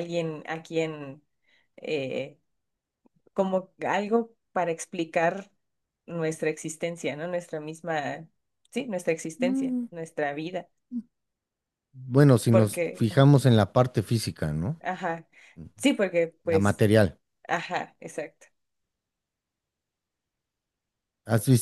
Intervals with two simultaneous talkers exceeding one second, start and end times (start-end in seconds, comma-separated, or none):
none